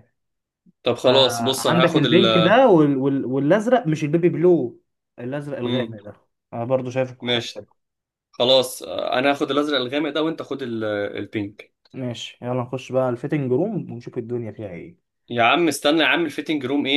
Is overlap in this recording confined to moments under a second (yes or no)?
no